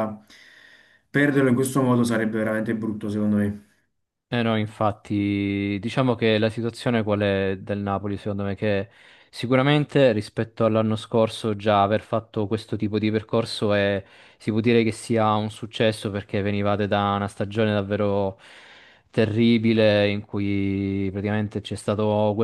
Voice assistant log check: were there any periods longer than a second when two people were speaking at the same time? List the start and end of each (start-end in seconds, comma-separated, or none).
none